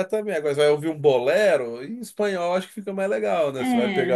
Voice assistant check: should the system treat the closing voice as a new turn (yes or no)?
yes